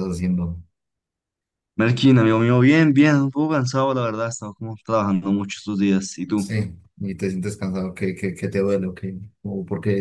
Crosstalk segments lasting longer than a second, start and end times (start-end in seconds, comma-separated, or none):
none